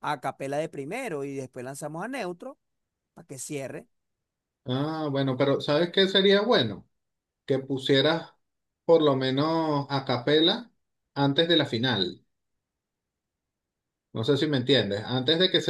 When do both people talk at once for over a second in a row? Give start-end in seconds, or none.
none